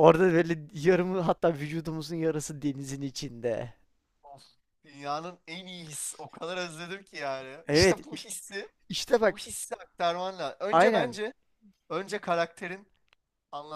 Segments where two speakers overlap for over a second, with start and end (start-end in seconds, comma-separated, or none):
none